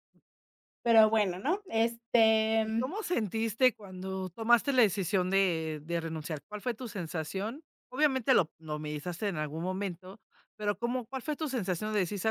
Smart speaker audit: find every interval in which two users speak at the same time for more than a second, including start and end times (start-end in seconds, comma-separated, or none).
none